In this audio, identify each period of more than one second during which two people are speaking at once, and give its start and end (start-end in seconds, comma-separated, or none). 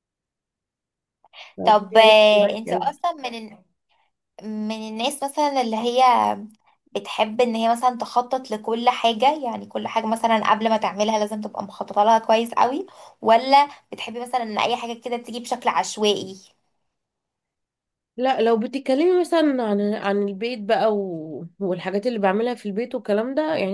1.6-3.0